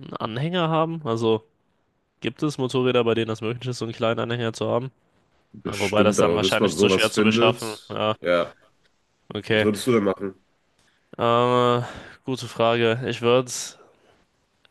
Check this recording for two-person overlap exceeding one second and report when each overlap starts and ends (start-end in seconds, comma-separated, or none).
5.6-8.1